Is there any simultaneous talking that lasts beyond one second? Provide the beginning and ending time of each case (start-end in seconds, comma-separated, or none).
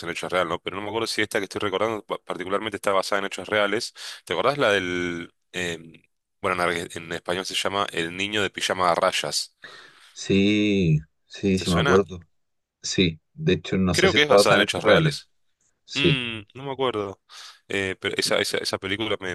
13.9-15.2